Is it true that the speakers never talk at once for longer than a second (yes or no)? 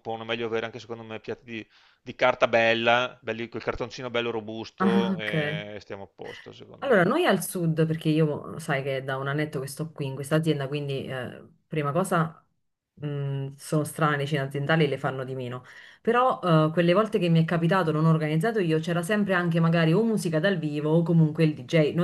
yes